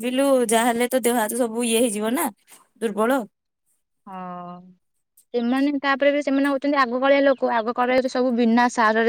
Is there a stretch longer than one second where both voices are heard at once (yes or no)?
no